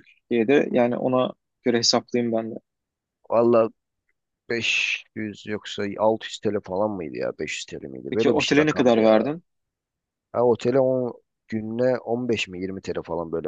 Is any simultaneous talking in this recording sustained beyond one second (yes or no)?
yes